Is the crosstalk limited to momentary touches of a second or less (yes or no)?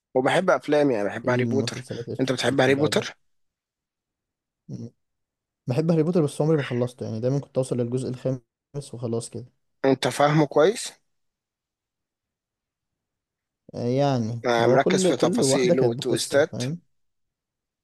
no